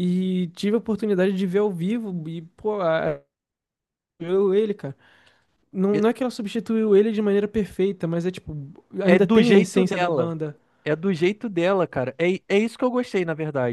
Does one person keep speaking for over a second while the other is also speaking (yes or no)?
yes